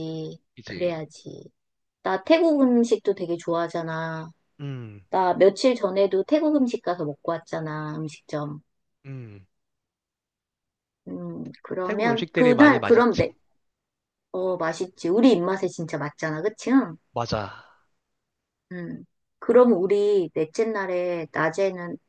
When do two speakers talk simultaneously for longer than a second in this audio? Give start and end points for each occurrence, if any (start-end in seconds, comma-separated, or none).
11.8-13.3